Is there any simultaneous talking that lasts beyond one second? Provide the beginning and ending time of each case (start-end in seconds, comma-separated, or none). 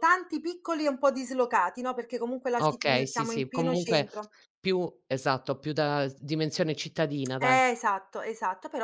2.6-4.1